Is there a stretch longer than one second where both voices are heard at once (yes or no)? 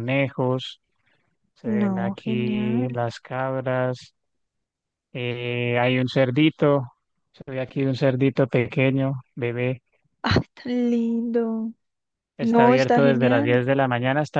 yes